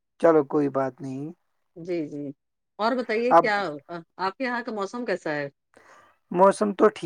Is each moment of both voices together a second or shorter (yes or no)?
yes